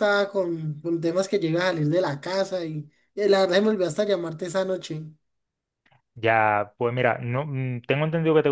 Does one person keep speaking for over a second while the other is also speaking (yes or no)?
no